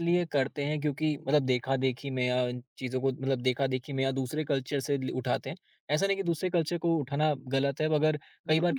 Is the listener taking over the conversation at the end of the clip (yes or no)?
no